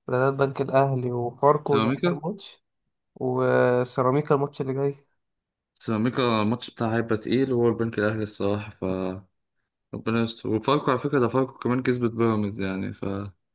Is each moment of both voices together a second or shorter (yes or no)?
yes